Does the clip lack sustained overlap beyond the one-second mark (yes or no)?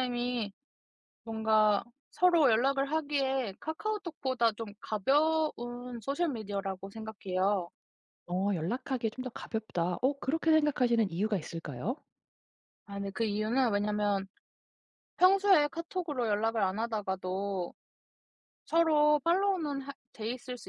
yes